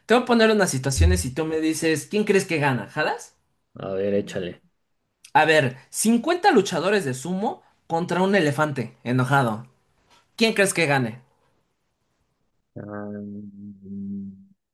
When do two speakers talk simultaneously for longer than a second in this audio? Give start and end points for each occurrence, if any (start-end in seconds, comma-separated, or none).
none